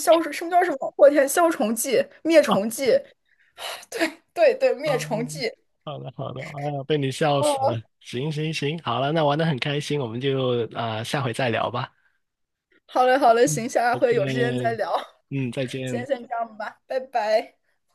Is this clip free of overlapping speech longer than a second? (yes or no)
no